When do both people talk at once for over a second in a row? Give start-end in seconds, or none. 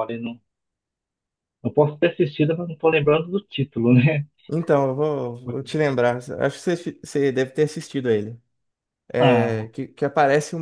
none